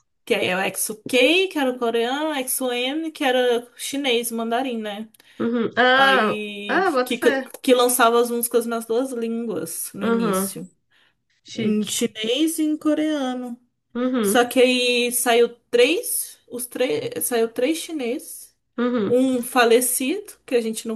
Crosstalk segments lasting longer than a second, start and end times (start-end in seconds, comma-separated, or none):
5.9-7.5